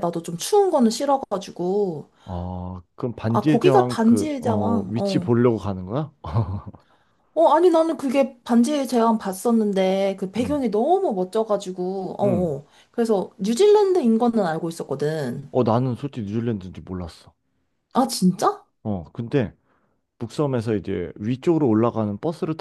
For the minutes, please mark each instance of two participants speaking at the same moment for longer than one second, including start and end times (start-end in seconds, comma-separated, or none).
3.3-5.3